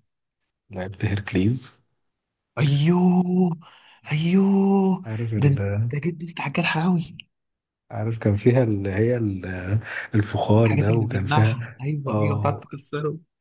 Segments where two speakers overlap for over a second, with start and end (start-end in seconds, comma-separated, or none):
10.6-12.6